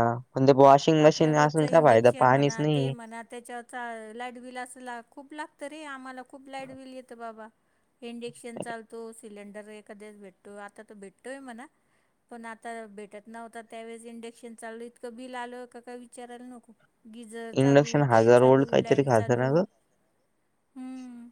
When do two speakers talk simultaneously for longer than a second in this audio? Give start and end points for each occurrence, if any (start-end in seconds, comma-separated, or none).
17.6-19.5